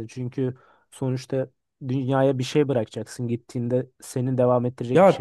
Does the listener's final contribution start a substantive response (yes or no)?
yes